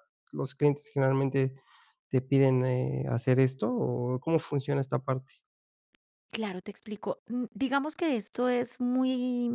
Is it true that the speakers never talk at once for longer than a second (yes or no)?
yes